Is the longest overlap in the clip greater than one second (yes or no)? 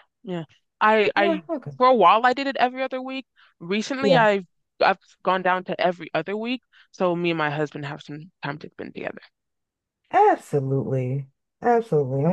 no